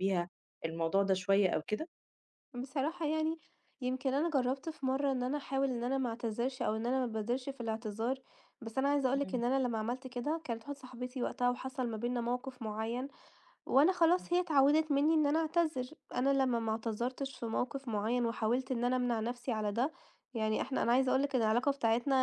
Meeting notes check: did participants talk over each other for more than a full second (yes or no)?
no